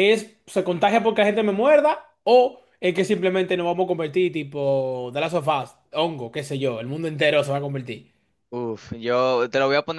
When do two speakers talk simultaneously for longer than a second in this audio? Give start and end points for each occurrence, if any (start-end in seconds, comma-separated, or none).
none